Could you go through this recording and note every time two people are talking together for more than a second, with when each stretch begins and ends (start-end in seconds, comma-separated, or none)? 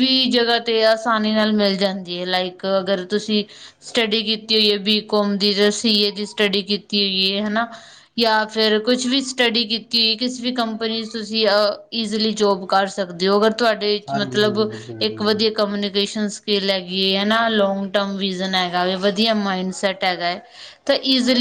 none